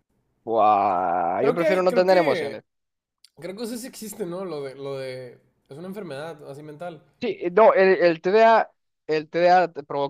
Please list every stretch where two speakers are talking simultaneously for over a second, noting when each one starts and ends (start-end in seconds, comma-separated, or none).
1.4-2.6